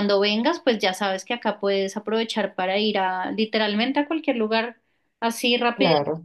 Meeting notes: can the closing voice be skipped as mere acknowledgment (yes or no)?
yes